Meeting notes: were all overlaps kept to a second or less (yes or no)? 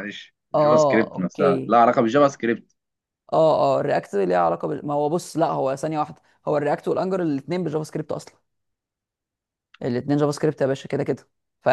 no